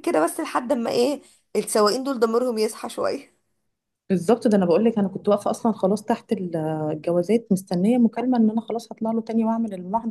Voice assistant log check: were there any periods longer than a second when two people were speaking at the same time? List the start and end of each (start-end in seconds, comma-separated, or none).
none